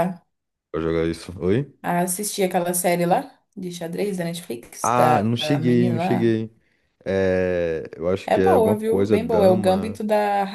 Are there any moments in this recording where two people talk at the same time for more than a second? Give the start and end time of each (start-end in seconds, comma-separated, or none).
4.8-6.4, 8.3-10.0